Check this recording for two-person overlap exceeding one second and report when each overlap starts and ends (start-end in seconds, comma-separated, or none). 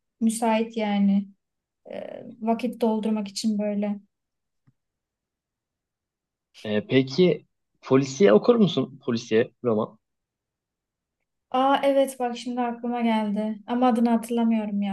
none